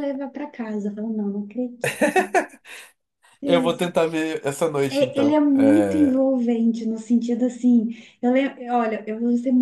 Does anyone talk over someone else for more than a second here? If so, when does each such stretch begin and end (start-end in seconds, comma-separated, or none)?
4.9-6.3